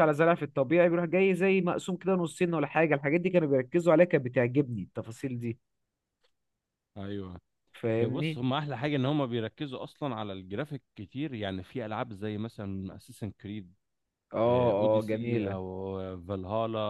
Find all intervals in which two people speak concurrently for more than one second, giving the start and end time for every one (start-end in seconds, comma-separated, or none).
none